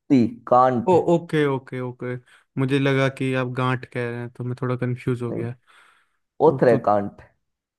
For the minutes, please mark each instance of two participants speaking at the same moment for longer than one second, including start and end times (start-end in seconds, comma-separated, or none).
none